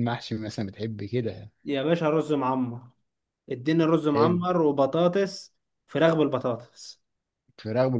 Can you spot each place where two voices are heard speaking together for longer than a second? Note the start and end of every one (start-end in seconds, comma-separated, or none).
none